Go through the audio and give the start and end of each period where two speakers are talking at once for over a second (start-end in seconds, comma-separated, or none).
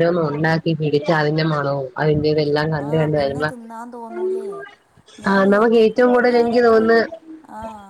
5.3-6.8